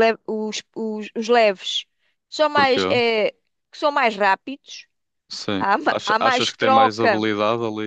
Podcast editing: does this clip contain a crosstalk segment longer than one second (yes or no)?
yes